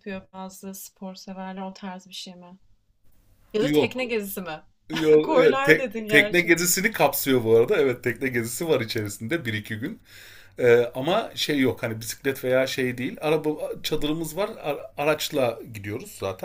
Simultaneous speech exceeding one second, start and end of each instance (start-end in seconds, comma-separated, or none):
5.2-6.5